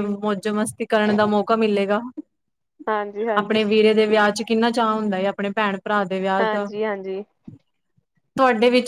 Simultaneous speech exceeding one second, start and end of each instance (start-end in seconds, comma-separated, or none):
none